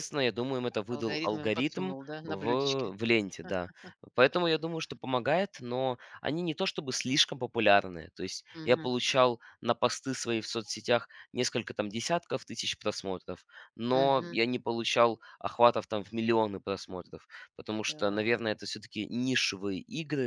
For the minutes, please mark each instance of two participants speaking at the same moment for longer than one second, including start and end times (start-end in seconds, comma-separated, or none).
0.9-2.9